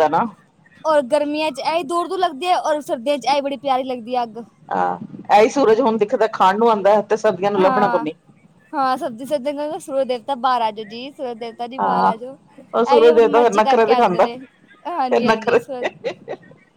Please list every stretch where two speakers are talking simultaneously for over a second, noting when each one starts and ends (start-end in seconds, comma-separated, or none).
12.7-14.3